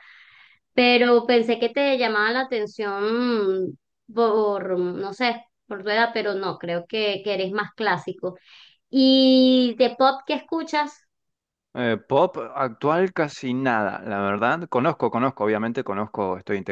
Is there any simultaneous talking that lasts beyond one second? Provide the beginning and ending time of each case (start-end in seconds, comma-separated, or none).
none